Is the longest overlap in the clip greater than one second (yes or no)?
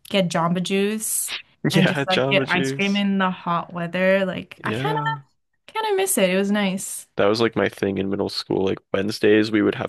yes